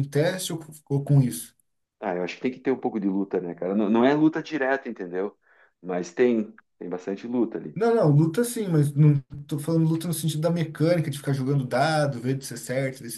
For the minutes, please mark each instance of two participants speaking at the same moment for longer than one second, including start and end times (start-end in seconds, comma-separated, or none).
none